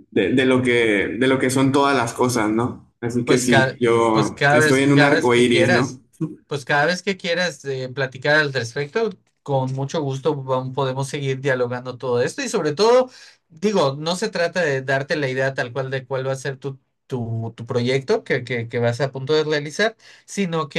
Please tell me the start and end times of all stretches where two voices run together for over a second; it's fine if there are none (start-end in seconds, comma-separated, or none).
3.2-6.0